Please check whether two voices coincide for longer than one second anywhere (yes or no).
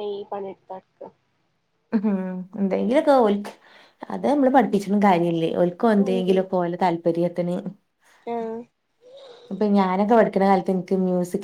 no